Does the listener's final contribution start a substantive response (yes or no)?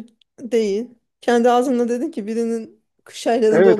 yes